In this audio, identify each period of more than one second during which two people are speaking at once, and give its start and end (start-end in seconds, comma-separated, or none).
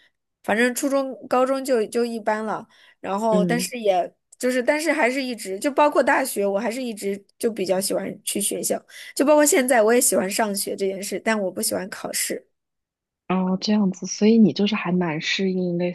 none